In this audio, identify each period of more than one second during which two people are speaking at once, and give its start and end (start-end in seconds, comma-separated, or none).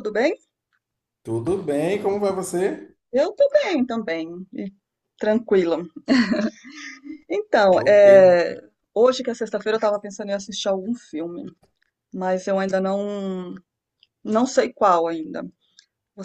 none